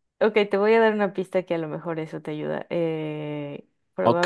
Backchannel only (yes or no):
no